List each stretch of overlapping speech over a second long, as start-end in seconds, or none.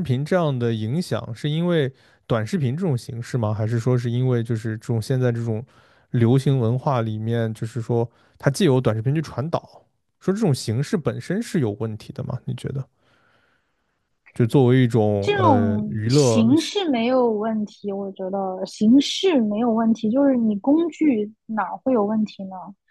15.2-16.4